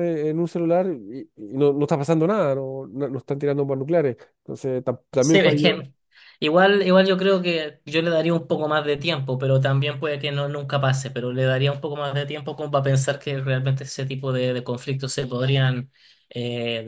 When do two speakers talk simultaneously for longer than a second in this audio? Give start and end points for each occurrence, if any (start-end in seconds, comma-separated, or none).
none